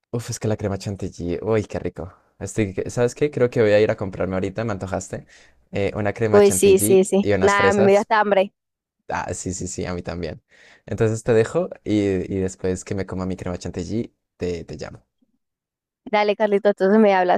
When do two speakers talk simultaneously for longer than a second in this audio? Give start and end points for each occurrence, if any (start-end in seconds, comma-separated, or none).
6.3-8.1